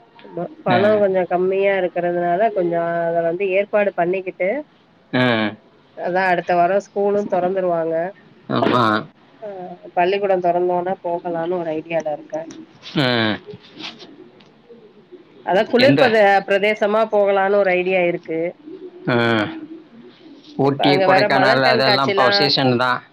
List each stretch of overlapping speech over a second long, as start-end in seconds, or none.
20.7-22.2